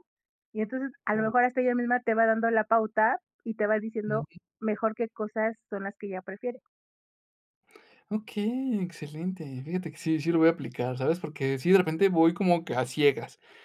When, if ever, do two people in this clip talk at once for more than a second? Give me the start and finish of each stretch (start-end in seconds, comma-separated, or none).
none